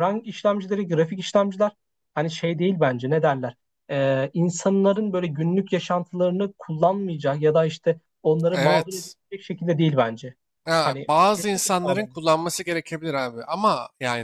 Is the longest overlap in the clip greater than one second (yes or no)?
yes